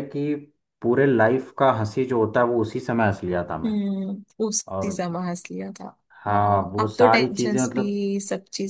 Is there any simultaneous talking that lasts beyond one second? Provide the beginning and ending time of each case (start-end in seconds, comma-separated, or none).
6.3-8.0